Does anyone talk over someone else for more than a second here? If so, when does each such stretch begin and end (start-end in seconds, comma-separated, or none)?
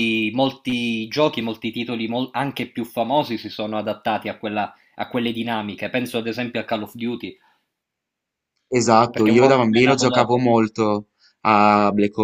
9.1-10.5